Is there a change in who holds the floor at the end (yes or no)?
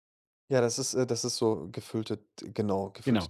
yes